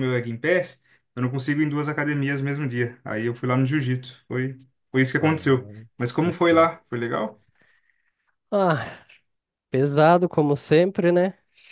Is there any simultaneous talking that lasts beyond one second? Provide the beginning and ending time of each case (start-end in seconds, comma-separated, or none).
5.2-6.7